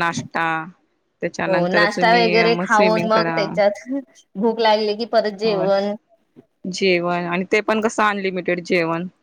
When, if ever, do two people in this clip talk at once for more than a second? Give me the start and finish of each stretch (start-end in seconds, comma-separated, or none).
1.5-3.4